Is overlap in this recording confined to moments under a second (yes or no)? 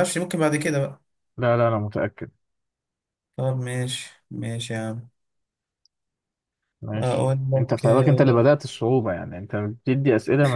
no